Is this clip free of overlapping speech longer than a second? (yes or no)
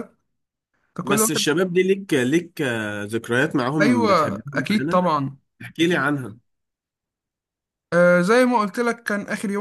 no